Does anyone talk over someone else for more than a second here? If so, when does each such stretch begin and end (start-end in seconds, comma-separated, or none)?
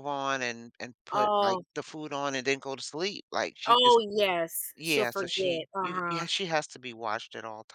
4.7-6.3